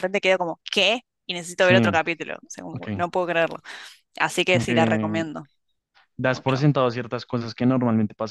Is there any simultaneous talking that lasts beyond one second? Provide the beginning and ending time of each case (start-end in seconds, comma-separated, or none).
none